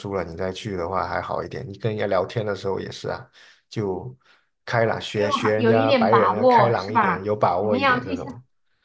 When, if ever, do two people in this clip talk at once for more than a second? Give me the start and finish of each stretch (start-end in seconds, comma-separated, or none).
5.1-8.3